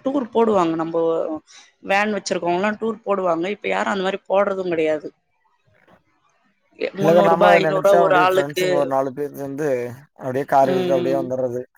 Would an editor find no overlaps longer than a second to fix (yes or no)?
no